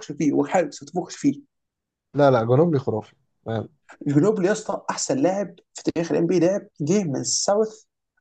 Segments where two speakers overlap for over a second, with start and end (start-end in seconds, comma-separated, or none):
none